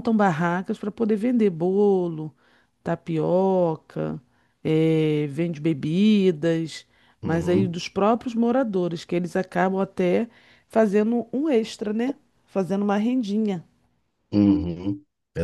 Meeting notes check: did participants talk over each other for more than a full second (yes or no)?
no